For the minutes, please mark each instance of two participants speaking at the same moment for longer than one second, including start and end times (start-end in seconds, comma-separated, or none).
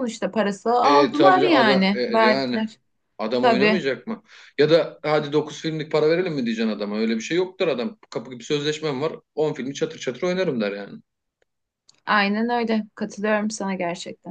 0.8-2.6